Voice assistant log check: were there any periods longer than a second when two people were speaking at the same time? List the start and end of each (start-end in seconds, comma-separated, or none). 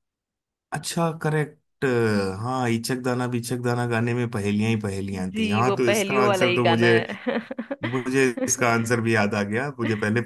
5.3-6.9